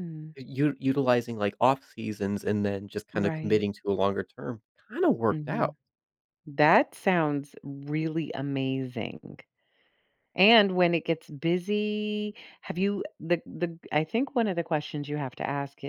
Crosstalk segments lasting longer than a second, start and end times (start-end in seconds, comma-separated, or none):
none